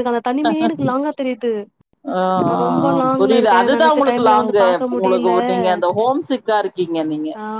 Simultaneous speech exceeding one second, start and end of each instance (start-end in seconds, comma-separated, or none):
2.6-5.4